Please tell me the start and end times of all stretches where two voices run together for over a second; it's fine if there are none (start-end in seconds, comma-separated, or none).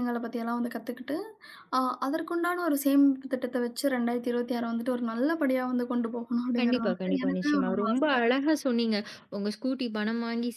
6.6-8.3